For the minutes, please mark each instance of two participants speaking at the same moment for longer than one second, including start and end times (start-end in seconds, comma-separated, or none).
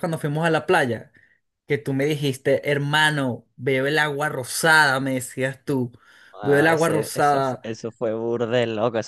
6.4-7.6